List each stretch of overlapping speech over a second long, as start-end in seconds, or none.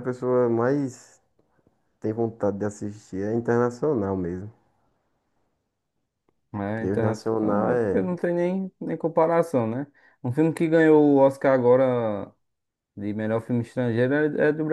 6.7-8.1